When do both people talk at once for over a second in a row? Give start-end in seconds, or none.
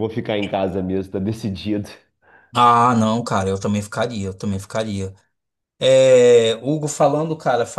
none